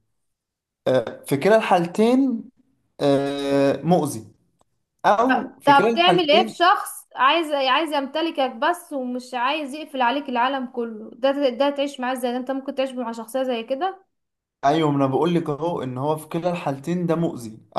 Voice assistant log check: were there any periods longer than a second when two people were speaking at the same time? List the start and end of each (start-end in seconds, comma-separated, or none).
5.3-6.6